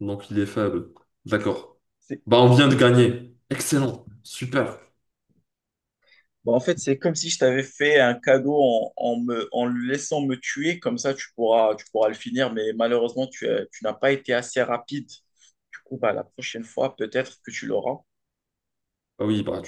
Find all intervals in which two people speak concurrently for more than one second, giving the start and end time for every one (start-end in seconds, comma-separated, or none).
none